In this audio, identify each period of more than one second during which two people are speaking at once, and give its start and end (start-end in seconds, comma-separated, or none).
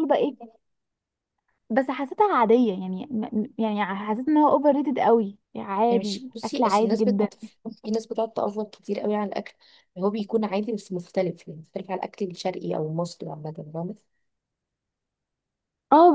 5.9-7.3